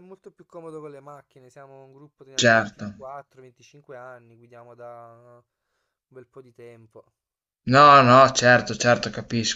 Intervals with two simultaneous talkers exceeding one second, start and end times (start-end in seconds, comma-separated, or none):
none